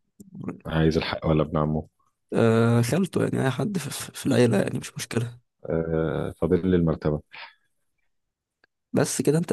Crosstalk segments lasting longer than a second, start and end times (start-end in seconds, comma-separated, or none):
none